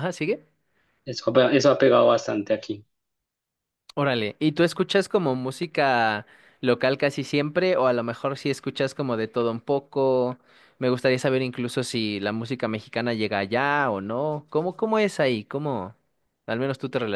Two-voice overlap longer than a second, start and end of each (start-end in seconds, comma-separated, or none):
none